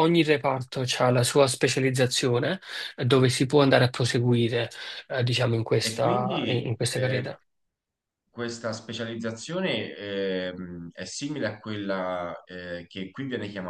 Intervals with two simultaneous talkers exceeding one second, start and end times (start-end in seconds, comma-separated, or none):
5.8-7.3